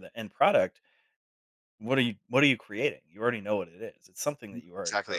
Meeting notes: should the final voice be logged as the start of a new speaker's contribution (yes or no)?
yes